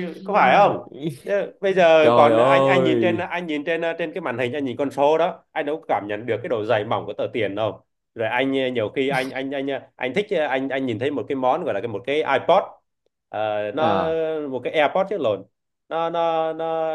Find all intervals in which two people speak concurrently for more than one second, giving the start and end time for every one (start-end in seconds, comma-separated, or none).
2.0-3.2